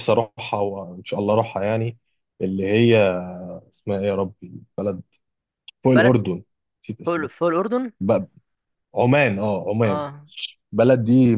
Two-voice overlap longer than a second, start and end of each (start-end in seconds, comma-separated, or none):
none